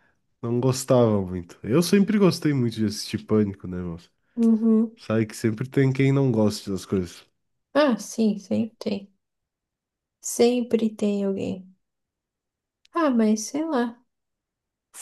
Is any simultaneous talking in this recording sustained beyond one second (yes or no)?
no